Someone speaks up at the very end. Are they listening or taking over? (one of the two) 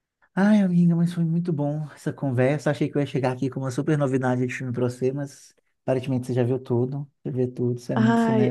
taking over